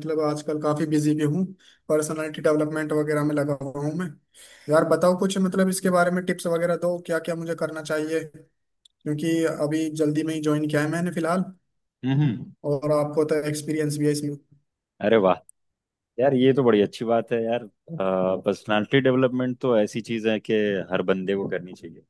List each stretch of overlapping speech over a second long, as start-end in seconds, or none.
none